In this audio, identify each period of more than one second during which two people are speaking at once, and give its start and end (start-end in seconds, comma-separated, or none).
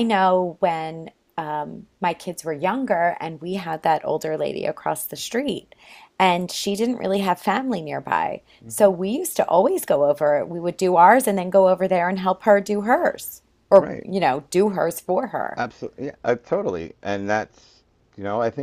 none